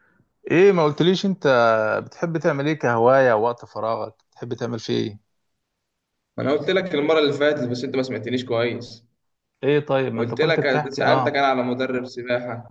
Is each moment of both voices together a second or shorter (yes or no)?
no